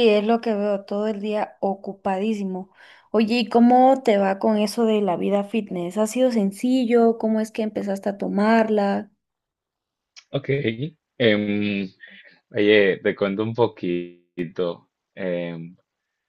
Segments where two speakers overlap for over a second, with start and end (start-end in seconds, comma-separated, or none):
none